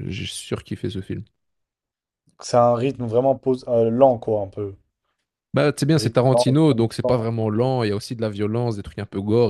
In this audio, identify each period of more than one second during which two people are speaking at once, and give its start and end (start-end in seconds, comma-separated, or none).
5.9-7.3